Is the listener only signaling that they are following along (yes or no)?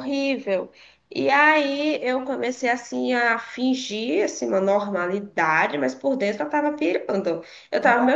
yes